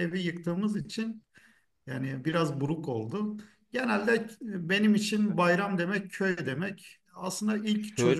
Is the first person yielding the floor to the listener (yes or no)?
no